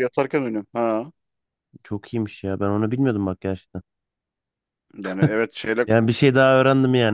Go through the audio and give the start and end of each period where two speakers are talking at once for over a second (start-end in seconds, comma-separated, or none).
none